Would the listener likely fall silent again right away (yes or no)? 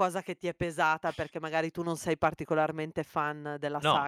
no